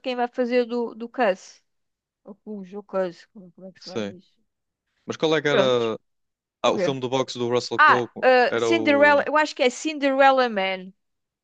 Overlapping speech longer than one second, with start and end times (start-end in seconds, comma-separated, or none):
7.8-9.3